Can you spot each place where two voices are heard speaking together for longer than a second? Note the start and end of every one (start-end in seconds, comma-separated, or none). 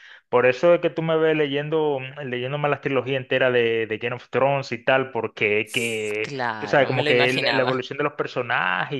5.7-7.8